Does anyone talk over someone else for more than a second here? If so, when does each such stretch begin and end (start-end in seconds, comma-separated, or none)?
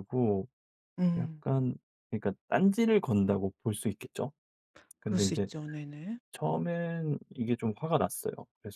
none